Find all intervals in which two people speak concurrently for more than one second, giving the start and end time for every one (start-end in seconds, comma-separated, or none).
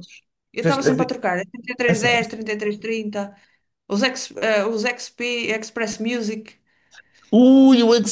none